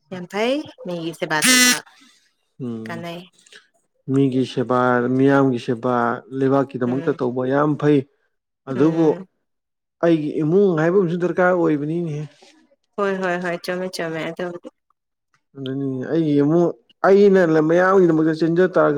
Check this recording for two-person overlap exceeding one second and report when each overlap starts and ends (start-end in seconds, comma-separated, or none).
none